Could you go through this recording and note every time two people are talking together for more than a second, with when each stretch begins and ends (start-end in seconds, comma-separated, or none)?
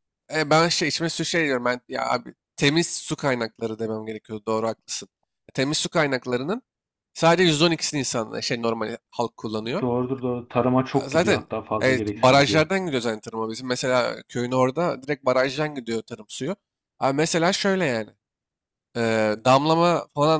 10.9-12.6